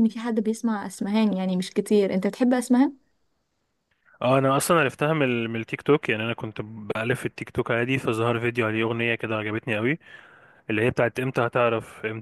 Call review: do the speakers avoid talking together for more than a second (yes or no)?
yes